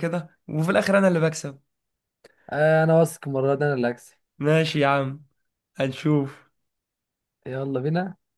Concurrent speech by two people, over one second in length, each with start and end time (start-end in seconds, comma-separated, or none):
none